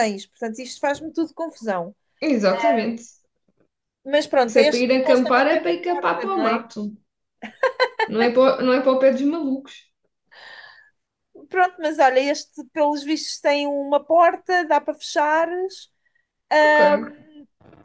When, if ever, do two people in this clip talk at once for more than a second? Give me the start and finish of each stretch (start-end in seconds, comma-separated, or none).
4.5-6.6